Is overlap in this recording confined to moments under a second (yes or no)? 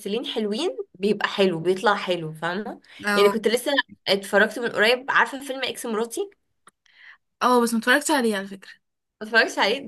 yes